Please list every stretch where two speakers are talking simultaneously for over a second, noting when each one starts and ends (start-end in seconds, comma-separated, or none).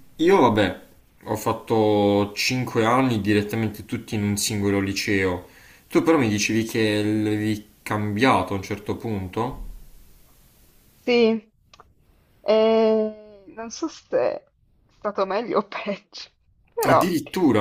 none